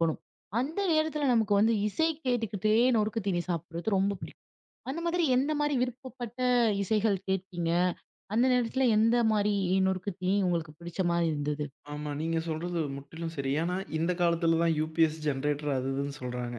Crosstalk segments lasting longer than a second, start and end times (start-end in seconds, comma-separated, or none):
none